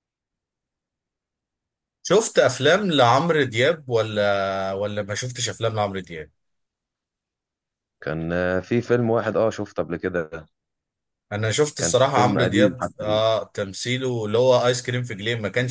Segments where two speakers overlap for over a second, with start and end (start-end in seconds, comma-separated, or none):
11.8-13.2